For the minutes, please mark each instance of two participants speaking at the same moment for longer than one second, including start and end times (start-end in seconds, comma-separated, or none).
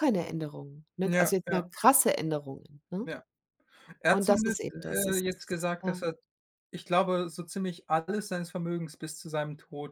4.1-6.0